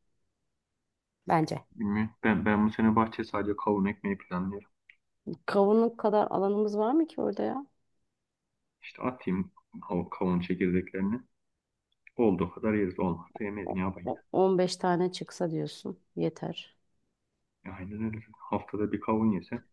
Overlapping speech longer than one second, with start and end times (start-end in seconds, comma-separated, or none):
none